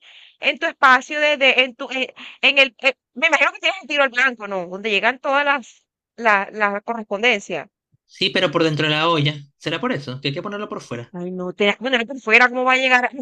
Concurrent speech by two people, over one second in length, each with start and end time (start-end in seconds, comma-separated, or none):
none